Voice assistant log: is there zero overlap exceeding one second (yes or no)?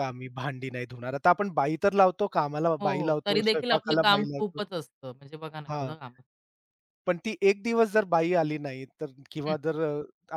no